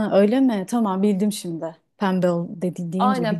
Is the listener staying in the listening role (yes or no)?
no